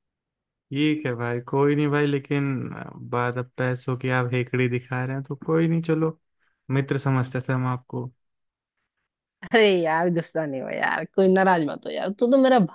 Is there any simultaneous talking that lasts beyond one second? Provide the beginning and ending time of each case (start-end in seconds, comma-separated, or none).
none